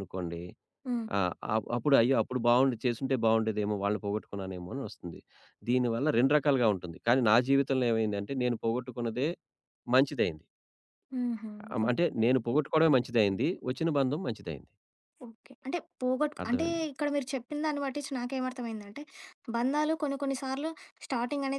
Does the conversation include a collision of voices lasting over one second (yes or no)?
no